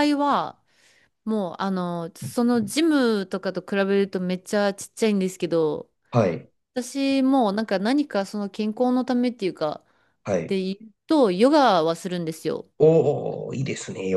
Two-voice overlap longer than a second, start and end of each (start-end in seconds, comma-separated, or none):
none